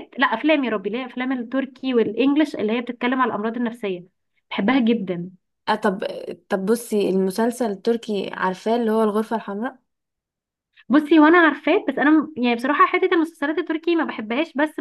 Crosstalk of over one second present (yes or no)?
no